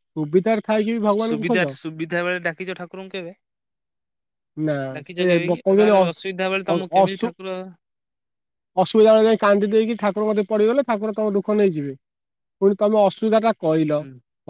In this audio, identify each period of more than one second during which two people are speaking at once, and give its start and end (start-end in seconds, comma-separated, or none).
4.9-7.3